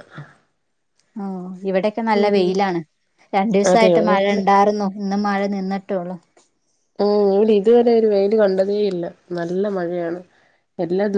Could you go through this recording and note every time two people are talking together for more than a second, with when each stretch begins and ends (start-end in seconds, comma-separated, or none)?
none